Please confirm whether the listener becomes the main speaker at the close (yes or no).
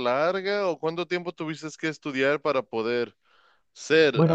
yes